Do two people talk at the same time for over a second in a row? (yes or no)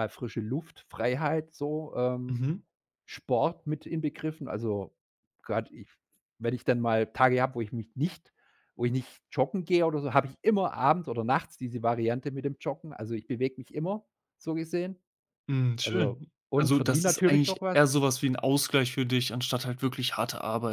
yes